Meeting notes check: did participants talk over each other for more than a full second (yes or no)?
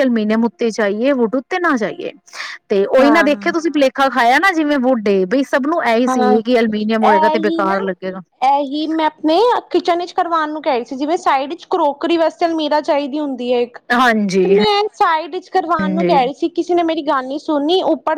no